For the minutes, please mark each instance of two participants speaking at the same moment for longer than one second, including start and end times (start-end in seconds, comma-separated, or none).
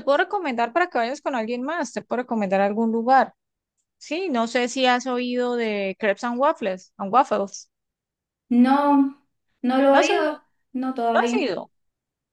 none